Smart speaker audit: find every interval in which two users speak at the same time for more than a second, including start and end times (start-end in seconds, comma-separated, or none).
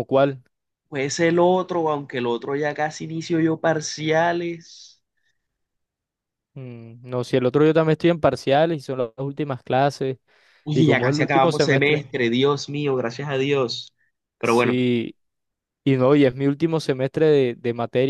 10.7-12.1